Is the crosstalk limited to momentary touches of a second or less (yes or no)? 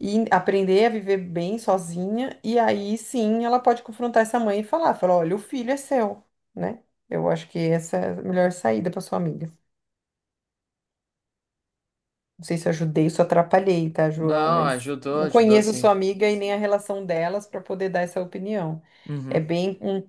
no